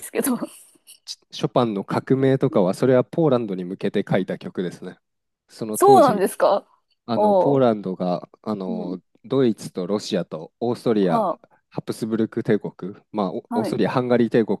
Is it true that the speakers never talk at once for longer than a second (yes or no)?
yes